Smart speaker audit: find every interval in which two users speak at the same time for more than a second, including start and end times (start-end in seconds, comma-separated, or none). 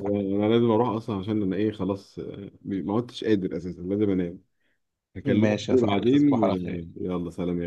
5.2-6.5